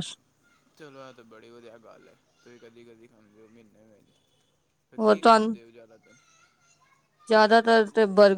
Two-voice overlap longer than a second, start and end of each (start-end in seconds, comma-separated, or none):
none